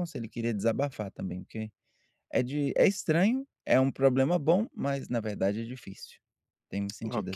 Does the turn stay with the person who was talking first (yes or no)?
no